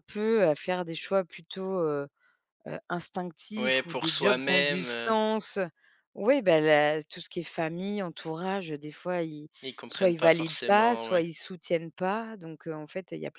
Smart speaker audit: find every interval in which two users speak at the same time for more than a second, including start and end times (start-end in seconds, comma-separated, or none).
3.6-5.2, 9.9-11.2